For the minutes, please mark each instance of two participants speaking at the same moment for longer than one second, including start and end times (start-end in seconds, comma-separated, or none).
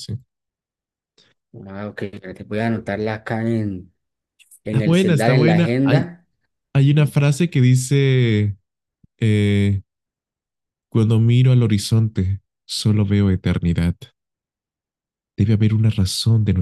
4.7-6.1